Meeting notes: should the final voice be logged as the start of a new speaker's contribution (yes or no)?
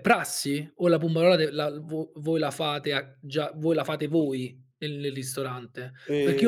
no